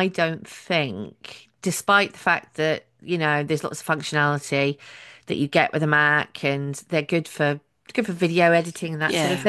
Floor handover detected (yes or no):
no